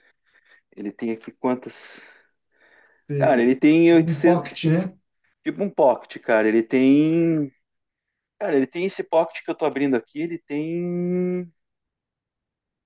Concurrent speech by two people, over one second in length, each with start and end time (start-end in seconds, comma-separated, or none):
3.2-4.5